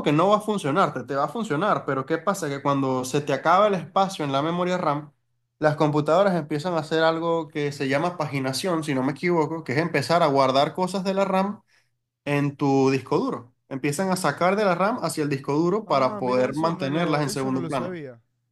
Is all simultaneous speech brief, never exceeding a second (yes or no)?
no